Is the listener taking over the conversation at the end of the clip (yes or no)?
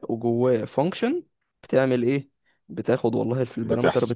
no